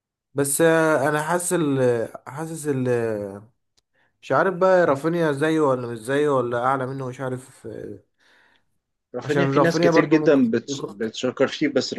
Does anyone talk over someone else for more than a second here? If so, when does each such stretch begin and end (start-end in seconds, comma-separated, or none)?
9.2-10.9